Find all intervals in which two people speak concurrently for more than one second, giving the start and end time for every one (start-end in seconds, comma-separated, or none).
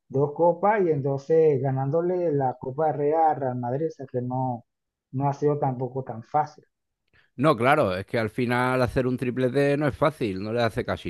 none